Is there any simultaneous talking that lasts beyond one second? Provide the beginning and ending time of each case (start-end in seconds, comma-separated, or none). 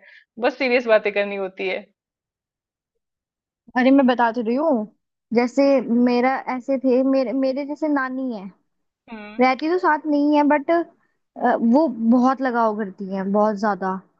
none